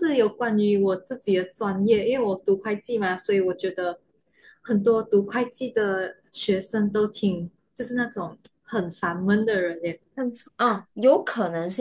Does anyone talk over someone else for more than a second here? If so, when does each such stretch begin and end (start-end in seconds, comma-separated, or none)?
none